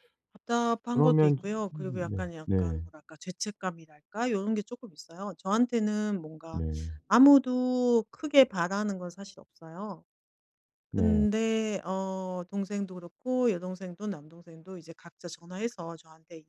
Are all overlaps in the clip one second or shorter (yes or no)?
no